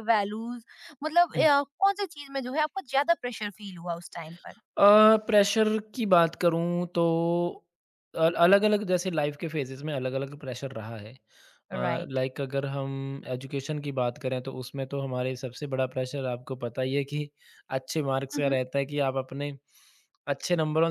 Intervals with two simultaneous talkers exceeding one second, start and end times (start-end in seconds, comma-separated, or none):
none